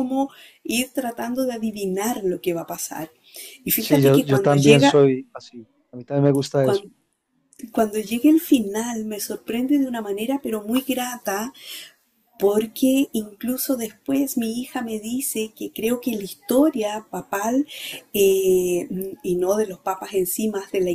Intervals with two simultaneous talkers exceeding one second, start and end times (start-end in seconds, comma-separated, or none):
3.8-5.0